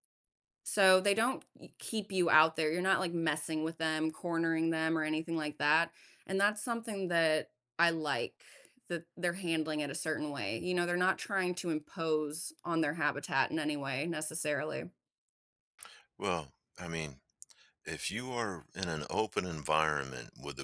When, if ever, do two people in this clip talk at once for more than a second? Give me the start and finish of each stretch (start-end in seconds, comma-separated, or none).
none